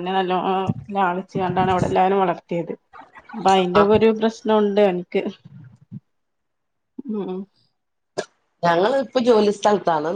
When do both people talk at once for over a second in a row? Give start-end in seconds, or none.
none